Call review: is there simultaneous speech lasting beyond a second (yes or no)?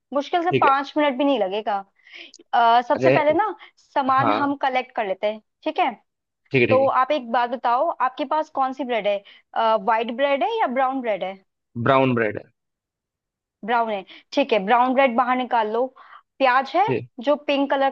no